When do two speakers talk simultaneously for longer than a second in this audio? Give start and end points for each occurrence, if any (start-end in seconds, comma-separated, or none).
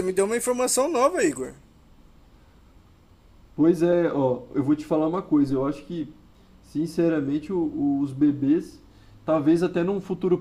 none